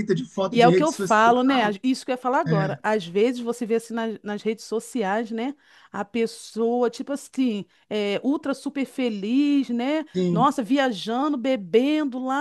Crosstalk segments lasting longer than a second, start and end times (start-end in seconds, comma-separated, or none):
0.5-1.8